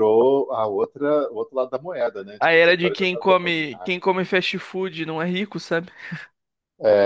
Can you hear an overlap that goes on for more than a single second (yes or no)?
yes